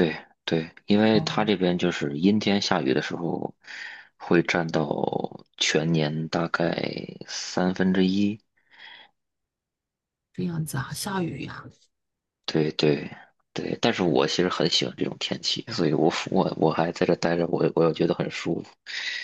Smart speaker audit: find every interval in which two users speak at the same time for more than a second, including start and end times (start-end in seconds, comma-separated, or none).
none